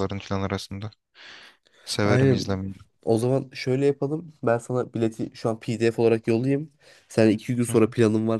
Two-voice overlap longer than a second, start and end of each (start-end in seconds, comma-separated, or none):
none